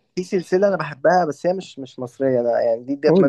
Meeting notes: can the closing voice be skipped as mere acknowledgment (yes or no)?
yes